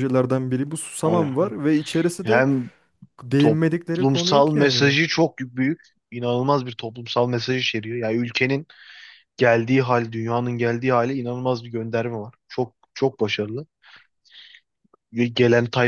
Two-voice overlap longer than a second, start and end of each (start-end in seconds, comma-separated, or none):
3.4-5.0